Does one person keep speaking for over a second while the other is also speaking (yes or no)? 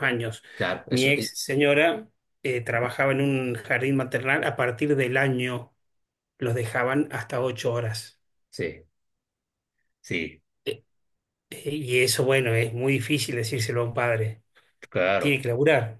no